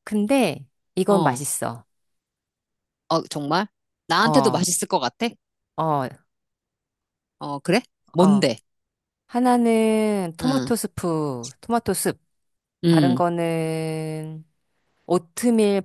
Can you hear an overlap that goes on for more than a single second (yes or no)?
no